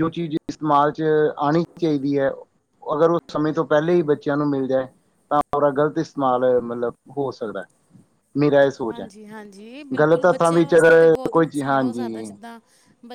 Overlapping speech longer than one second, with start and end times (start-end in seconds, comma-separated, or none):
10.0-12.3